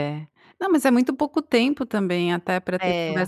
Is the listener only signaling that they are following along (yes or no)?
yes